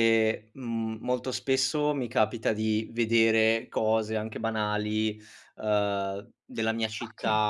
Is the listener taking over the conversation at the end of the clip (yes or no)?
no